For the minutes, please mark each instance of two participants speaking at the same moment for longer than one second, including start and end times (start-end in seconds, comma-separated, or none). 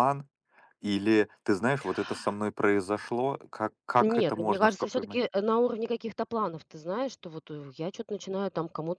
4.0-5.2